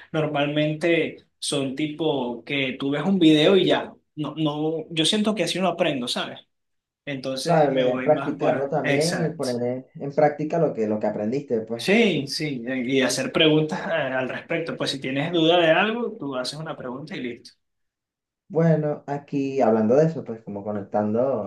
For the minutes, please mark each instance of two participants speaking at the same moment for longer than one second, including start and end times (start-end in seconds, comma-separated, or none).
7.4-9.5